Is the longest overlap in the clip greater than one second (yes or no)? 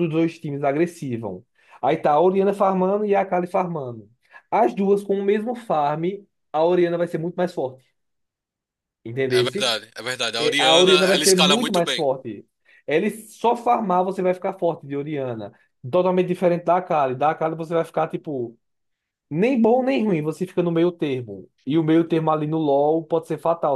yes